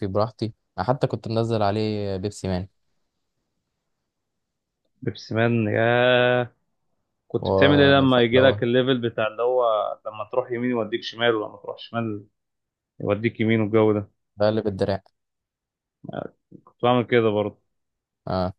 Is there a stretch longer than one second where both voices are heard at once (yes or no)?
no